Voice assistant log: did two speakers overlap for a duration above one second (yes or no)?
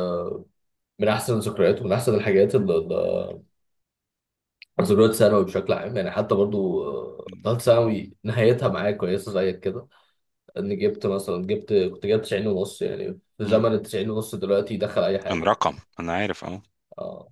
no